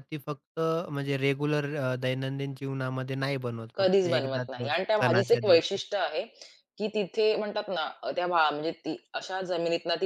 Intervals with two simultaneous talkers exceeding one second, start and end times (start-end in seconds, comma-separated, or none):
3.7-5.8